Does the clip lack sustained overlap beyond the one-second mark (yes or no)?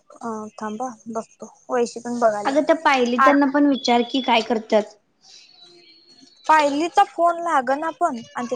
yes